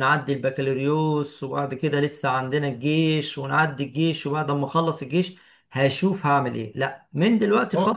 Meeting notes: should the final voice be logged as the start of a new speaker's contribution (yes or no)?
no